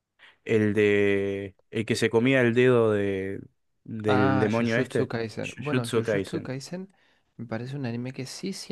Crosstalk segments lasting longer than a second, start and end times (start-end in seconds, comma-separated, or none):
4.0-6.5